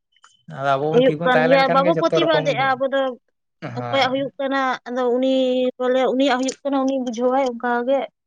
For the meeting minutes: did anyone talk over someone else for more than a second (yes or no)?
yes